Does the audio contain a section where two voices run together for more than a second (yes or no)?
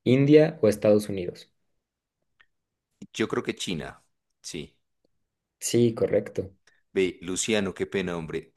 no